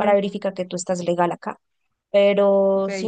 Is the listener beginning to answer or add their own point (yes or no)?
no